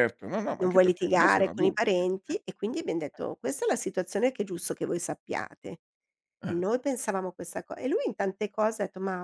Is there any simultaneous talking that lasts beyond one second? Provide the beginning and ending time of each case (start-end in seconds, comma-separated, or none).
0.6-1.9